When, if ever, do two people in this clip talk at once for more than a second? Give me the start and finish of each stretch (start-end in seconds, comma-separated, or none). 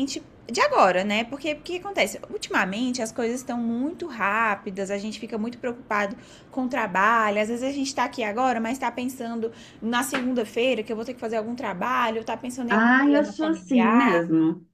12.7-14.2